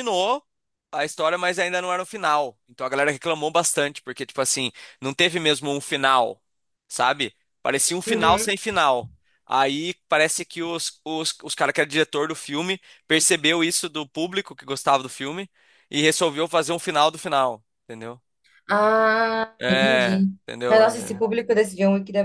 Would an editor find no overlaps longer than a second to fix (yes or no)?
no